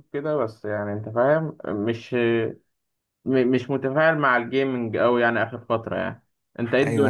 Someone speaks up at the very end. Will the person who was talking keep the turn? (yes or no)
no